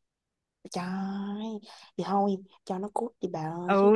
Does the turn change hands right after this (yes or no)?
yes